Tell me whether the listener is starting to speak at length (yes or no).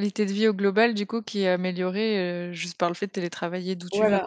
yes